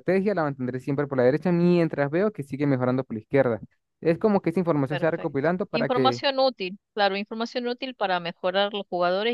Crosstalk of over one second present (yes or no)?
yes